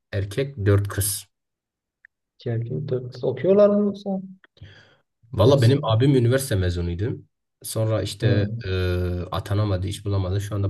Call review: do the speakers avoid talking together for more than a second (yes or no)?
yes